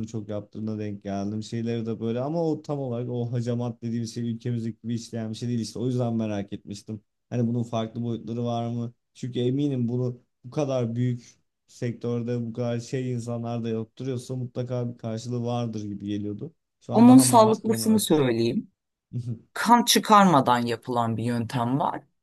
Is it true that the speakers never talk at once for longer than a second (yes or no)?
no